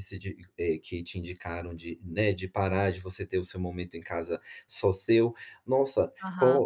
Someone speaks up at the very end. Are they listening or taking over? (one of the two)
listening